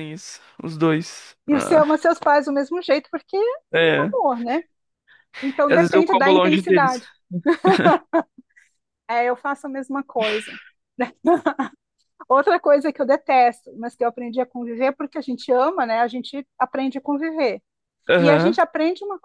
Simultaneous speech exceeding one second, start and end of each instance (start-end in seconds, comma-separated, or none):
5.7-7.0